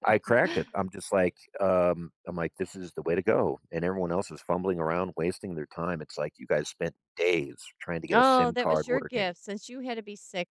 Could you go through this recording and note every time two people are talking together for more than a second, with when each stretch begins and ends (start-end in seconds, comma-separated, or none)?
8.1-9.3